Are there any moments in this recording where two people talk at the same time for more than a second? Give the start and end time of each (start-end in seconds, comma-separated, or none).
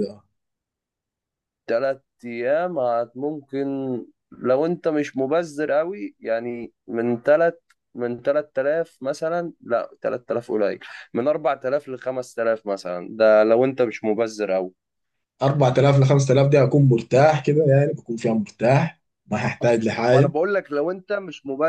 none